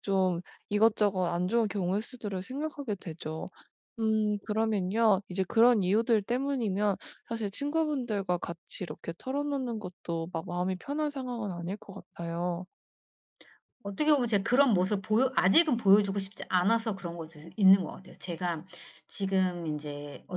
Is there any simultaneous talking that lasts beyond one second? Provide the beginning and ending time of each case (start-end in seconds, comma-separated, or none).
none